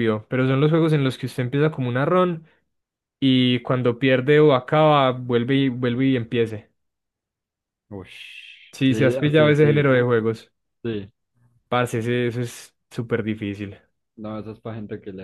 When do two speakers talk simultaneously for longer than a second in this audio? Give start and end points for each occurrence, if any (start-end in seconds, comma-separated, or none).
8.8-10.1